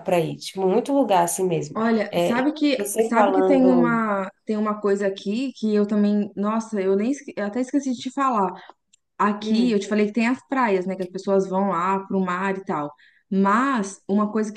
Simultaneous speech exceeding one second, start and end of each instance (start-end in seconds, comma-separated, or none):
1.7-4.0